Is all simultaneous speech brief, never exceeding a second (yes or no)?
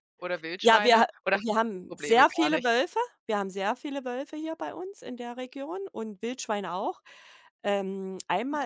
no